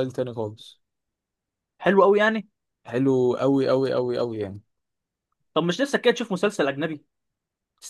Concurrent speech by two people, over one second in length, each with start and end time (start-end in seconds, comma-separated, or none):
none